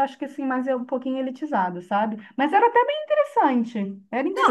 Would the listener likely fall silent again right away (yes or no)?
no